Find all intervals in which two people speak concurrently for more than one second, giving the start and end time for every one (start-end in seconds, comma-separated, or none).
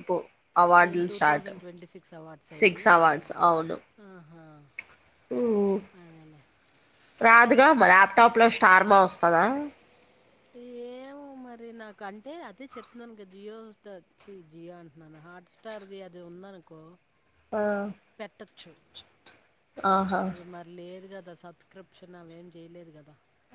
none